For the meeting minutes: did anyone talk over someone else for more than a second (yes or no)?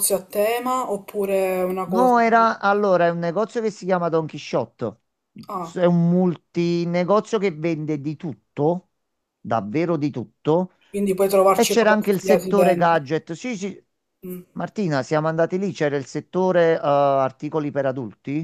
yes